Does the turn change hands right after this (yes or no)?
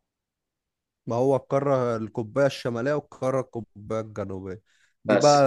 no